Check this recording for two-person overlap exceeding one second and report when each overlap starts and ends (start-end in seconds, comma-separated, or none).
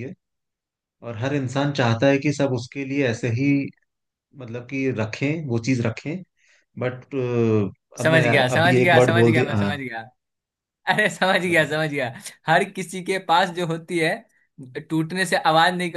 8.0-9.8